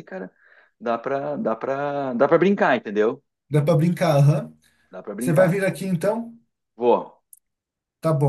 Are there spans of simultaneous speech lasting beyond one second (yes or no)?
no